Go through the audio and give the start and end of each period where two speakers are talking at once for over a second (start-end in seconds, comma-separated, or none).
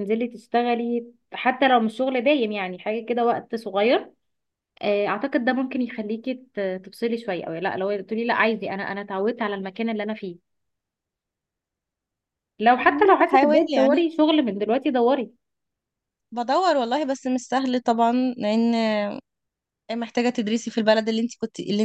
12.8-14.0